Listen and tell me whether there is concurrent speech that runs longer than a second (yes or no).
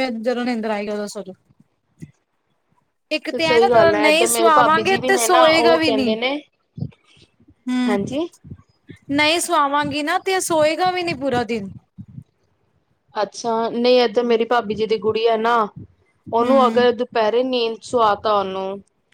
yes